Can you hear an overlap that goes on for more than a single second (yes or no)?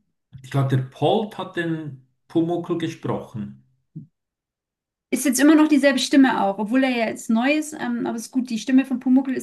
no